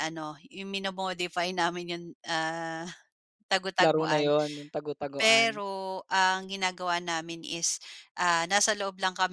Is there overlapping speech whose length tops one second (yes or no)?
no